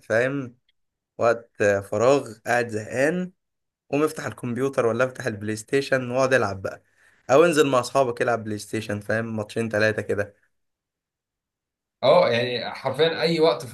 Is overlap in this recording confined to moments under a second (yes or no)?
yes